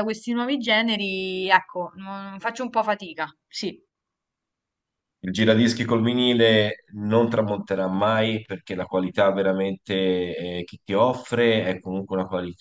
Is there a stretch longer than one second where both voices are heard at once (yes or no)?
no